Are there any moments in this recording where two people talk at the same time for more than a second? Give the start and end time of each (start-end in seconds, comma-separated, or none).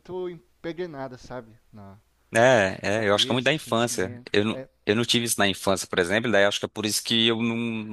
2.9-4.7